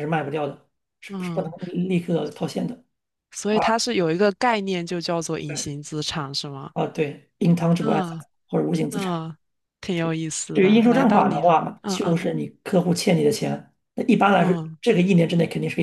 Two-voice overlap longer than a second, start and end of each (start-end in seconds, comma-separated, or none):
10.5-12.2